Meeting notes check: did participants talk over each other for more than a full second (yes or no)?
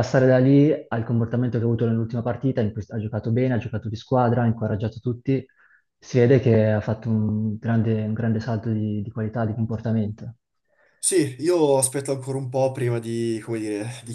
no